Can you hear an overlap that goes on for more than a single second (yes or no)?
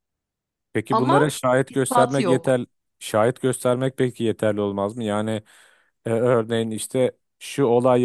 yes